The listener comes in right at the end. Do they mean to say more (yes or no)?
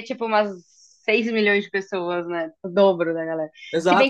yes